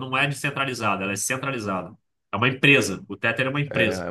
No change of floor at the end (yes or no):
no